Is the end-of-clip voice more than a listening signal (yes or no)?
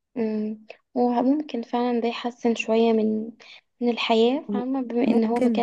no